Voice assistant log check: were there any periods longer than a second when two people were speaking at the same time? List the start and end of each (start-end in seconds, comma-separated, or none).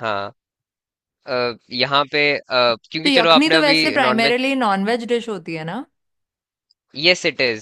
3.0-4.5